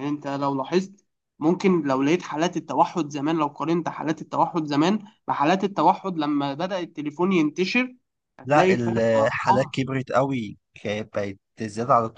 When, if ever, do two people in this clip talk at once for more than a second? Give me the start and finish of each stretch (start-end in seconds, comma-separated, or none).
8.4-9.7